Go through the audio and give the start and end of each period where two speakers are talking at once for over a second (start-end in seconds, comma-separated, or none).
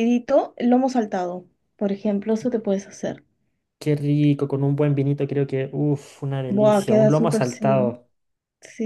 6.5-8.0